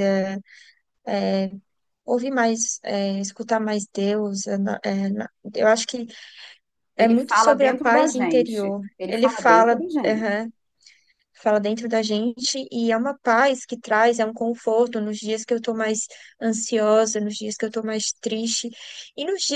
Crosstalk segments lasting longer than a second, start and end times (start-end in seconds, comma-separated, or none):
7.0-10.4